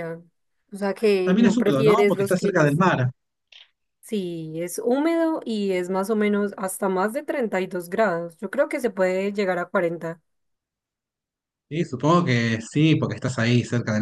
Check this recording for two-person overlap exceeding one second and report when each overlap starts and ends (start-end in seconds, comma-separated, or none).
1.2-2.8